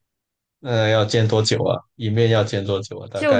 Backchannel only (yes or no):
no